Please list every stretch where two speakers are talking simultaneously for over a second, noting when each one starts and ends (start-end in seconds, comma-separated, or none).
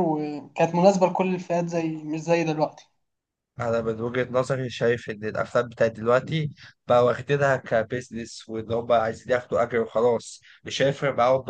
none